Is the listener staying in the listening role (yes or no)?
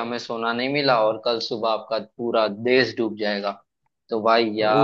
yes